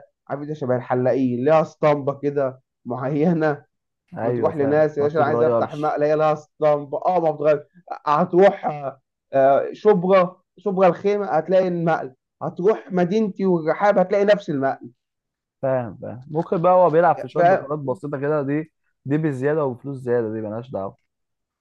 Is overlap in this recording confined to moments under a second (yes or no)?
no